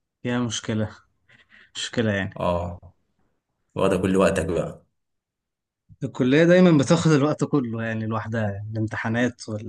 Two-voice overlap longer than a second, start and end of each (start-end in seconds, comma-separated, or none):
none